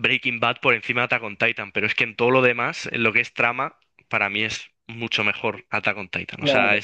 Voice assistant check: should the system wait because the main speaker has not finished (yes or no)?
no